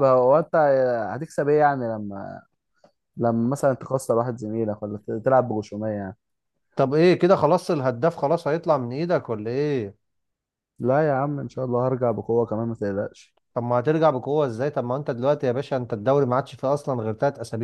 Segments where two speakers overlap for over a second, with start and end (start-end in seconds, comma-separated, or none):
none